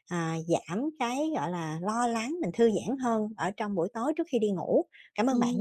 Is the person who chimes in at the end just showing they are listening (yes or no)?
no